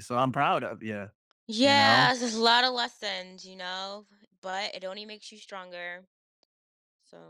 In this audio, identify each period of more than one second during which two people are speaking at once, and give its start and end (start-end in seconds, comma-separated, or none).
none